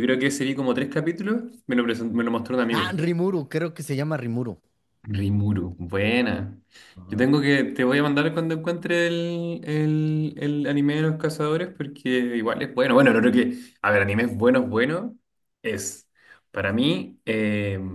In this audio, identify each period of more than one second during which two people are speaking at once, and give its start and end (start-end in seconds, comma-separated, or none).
none